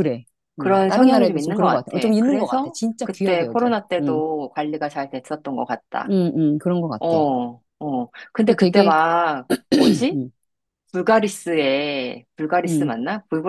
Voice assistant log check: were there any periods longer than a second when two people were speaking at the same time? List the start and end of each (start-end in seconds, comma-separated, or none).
0.6-4.2